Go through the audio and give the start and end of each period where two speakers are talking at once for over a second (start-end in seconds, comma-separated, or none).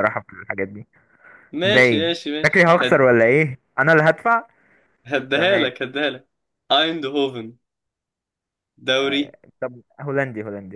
1.6-3.1